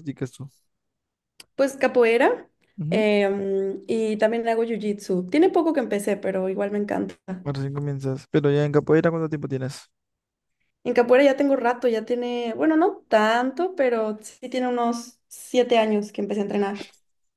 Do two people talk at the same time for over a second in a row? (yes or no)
no